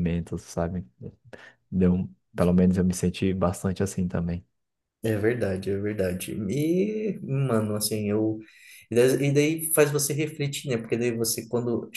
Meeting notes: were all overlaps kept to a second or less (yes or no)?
yes